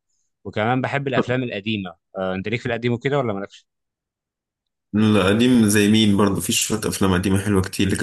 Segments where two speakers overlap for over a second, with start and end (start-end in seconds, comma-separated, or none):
none